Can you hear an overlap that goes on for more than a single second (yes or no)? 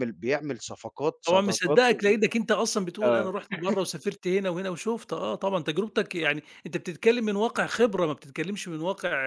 no